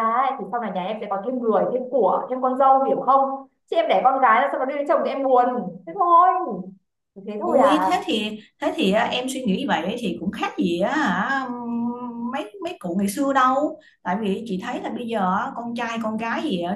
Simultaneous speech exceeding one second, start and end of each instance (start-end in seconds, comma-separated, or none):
none